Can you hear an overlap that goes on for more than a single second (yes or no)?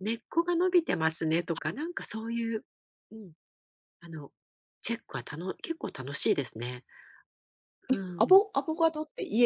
no